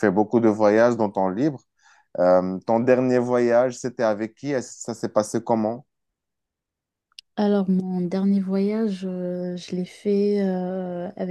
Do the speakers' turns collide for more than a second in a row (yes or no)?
no